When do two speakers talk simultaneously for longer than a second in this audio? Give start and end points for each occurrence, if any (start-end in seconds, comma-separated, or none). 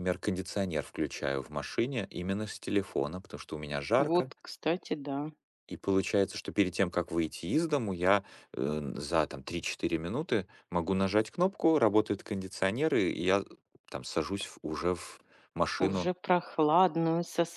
none